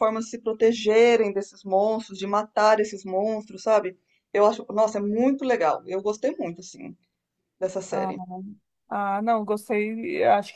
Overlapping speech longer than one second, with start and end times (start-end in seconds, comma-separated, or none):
none